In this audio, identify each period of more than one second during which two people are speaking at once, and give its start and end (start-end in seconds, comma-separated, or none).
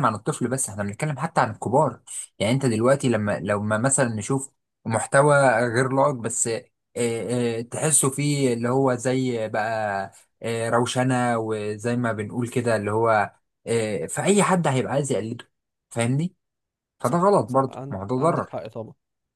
17.0-18.6